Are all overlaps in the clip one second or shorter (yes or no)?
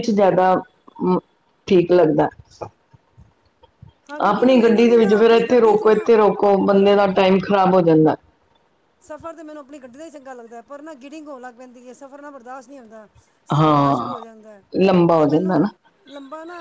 no